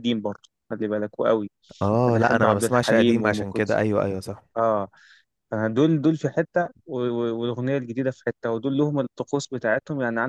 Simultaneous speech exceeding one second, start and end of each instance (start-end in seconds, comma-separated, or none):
2.1-3.9